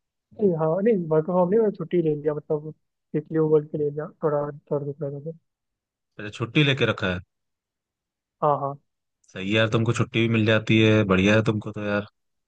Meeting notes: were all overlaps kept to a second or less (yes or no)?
yes